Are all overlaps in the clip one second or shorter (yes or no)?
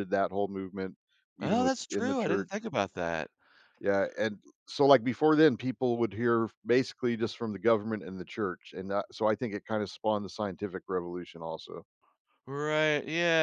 no